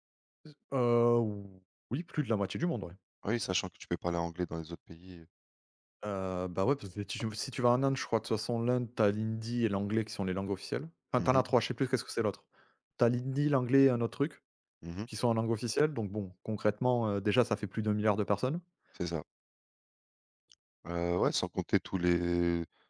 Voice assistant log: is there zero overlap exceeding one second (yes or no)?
yes